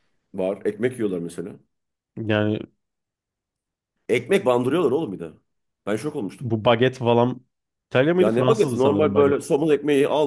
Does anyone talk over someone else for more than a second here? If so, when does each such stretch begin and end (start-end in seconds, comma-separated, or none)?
8.2-9.5